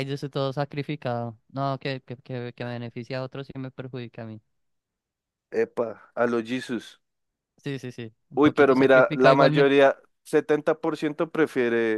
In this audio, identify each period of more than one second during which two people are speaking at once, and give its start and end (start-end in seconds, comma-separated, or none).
8.3-9.7